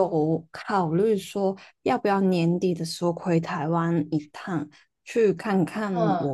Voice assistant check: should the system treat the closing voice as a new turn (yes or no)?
no